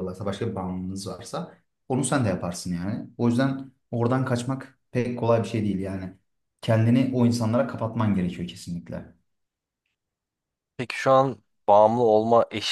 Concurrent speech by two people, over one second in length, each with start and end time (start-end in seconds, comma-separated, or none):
none